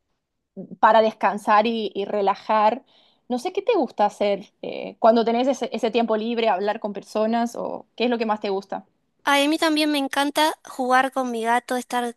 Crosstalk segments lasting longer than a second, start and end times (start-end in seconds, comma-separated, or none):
none